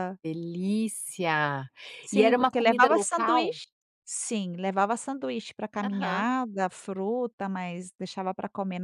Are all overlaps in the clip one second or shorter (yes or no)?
no